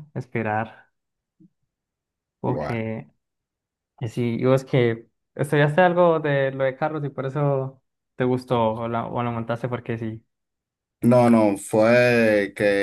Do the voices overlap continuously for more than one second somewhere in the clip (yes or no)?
no